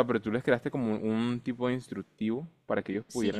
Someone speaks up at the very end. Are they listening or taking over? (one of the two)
taking over